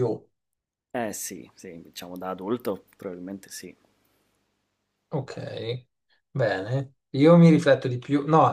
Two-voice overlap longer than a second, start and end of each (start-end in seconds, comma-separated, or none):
none